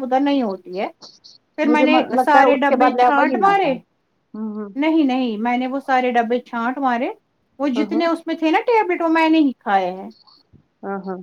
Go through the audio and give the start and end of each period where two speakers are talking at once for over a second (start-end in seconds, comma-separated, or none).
1.7-3.7